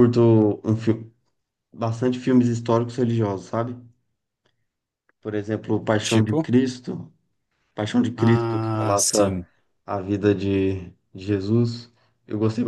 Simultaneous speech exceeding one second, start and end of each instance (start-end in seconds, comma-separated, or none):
8.2-9.4